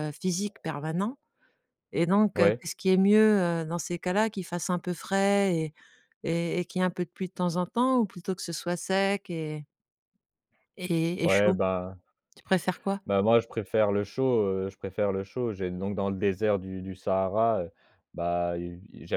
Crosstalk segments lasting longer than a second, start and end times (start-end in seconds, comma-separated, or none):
none